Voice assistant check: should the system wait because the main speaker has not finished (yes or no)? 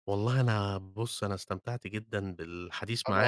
yes